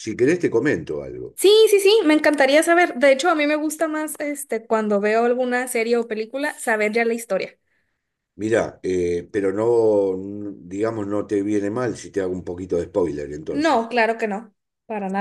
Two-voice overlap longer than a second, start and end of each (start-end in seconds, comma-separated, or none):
none